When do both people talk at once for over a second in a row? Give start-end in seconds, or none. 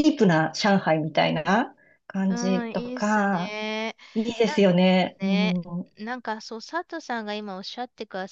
2.3-3.6